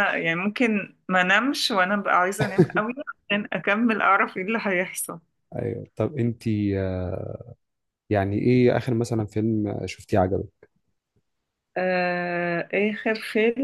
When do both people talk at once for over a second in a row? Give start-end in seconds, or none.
none